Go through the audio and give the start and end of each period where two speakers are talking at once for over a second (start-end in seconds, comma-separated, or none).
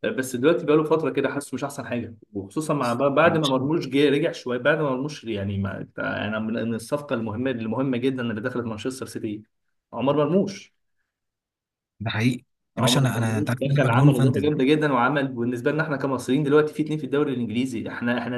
12.8-14.5